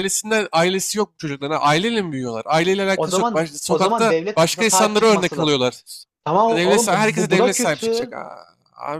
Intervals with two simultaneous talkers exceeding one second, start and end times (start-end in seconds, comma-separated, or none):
2.9-5.6, 6.5-8.2